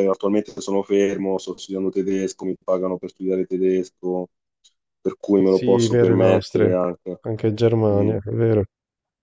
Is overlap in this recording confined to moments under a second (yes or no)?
no